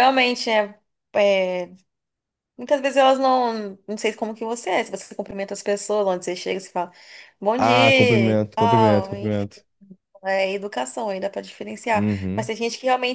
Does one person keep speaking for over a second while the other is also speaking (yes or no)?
yes